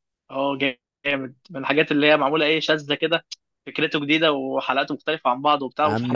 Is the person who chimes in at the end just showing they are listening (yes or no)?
no